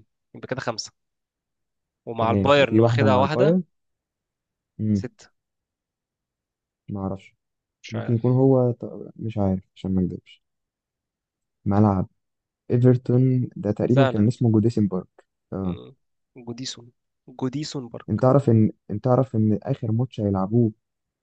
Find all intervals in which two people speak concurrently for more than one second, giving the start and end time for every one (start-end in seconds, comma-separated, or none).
2.2-3.6